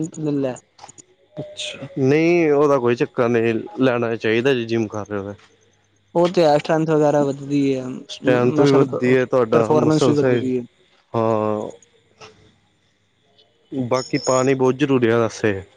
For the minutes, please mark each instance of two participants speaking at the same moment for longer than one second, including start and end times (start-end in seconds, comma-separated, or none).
8.6-10.2